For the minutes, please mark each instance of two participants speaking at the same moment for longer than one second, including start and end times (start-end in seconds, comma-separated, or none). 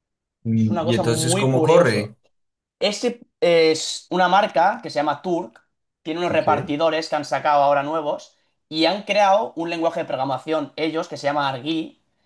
0.6-2.1